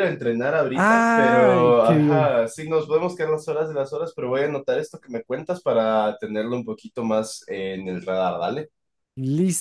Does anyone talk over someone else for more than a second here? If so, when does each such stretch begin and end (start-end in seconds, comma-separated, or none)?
0.7-2.3